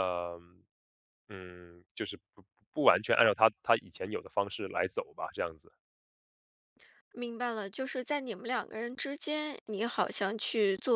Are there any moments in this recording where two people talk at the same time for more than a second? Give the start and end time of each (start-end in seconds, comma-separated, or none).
none